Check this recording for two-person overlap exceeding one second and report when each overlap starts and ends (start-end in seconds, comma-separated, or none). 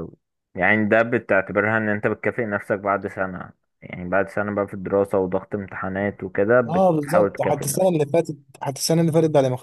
6.7-8.0